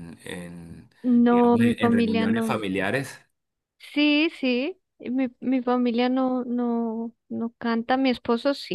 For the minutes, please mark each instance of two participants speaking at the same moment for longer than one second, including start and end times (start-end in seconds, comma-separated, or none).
1.3-2.6